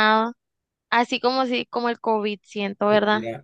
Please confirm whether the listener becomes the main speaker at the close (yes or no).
yes